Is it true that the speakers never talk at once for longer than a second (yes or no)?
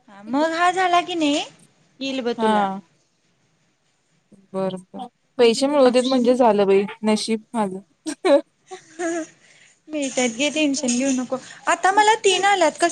yes